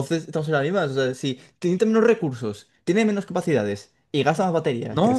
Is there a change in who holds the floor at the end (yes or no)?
yes